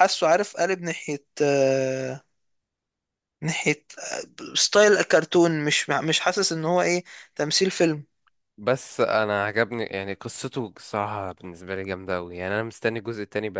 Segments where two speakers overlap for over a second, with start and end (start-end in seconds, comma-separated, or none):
none